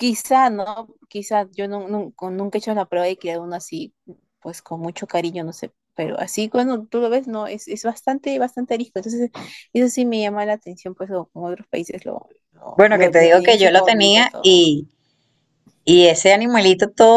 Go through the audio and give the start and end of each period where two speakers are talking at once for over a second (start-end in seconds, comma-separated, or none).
12.7-14.7